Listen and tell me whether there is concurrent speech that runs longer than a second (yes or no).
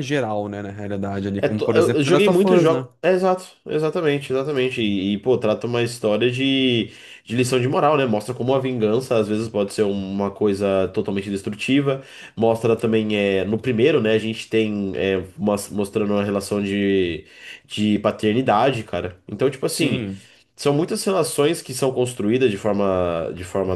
yes